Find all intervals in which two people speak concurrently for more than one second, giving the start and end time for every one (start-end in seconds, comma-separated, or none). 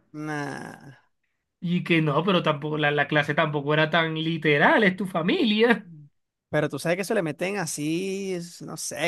none